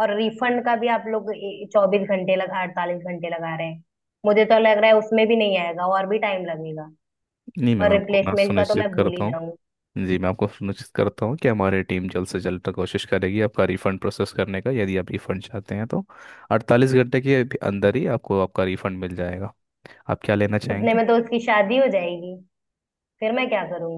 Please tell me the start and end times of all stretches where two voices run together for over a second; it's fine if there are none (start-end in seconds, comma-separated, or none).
7.8-9.4